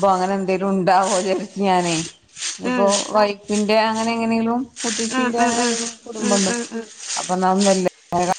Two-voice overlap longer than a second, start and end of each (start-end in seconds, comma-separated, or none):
5.2-6.5